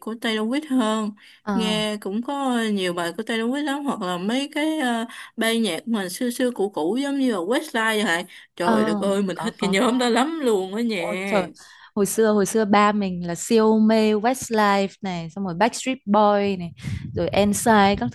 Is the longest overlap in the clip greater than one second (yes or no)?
yes